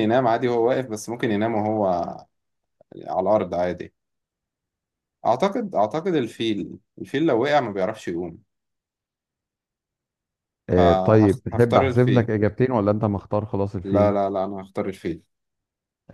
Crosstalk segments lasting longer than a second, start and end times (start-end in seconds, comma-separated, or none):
10.8-12.3